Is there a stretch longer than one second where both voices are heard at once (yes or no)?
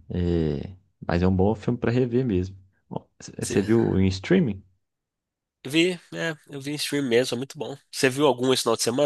no